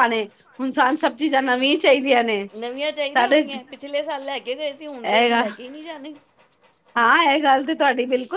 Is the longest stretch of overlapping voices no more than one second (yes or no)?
yes